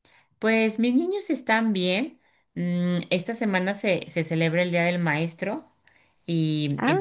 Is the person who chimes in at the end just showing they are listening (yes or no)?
yes